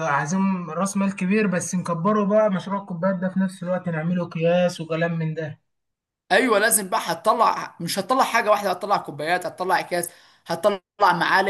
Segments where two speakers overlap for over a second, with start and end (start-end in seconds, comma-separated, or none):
none